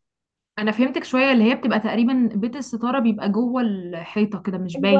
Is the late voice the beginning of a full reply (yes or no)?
yes